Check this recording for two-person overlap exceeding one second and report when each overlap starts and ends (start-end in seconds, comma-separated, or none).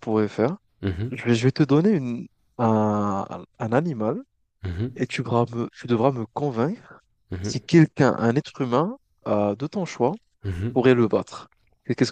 none